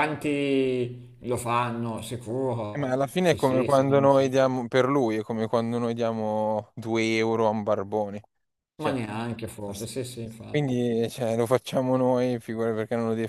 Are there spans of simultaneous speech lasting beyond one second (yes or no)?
yes